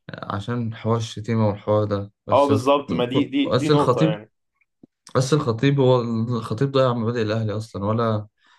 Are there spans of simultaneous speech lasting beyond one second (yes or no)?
yes